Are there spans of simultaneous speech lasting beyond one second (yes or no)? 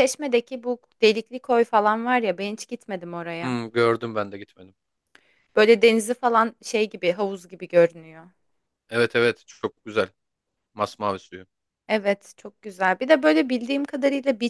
no